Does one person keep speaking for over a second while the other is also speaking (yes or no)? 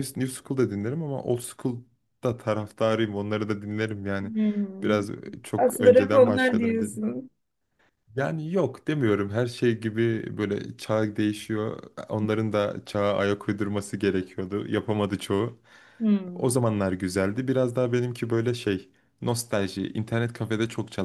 yes